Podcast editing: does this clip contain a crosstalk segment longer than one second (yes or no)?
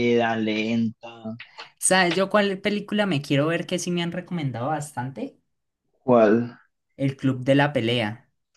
no